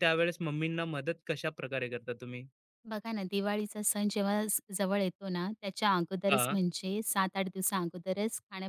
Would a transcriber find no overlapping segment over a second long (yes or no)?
yes